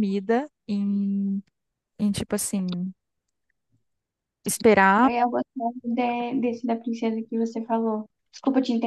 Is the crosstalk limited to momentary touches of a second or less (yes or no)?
yes